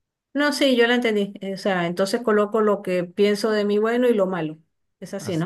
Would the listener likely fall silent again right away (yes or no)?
no